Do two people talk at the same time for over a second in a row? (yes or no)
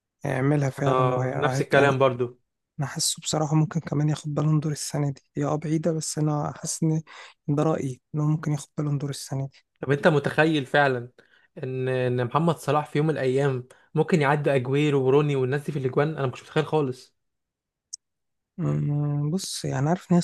yes